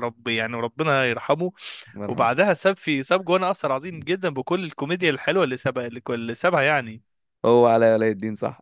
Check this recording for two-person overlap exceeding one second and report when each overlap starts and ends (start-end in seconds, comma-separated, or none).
none